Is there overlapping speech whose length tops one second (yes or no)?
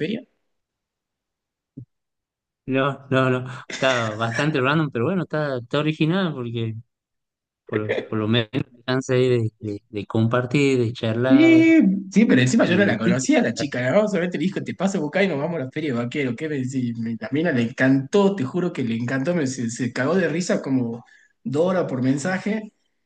no